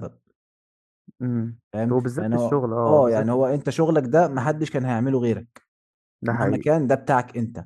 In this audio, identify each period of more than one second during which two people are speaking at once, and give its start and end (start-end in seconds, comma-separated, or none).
1.7-3.6